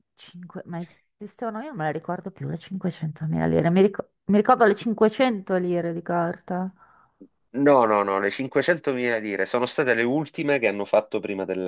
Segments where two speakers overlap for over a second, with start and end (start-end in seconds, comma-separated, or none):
none